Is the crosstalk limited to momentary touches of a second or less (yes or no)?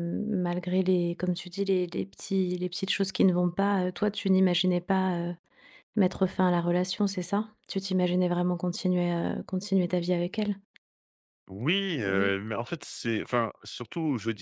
yes